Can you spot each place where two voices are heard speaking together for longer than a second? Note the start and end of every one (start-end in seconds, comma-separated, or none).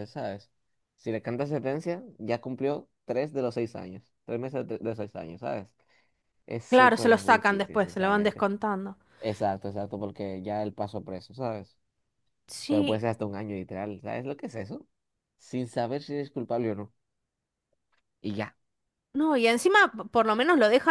6.7-8.5